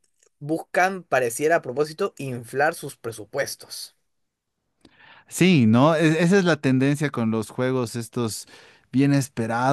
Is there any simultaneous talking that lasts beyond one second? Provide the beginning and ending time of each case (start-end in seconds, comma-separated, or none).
none